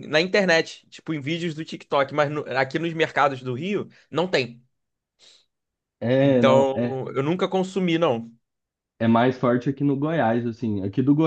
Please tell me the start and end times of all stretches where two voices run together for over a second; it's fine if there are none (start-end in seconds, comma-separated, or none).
none